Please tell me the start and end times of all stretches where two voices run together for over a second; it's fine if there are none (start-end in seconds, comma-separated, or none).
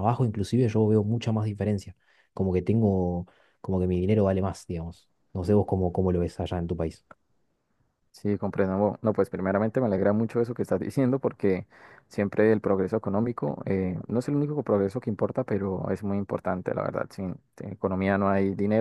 none